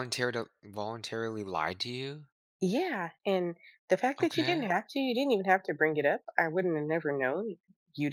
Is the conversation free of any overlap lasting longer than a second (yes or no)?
yes